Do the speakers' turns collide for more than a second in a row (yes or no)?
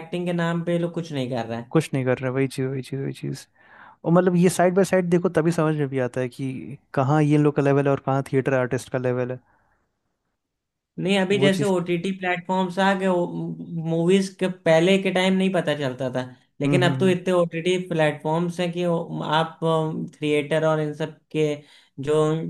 no